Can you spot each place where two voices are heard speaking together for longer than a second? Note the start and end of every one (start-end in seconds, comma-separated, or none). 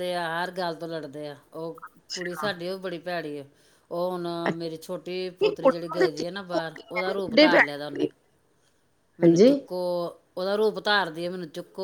5.3-8.1